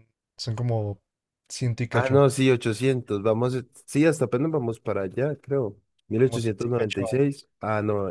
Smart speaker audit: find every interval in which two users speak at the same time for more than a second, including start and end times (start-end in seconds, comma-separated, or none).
6.2-7.5